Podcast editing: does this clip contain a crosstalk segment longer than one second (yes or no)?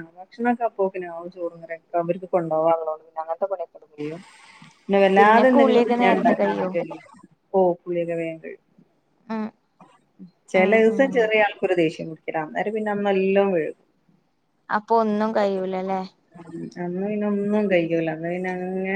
yes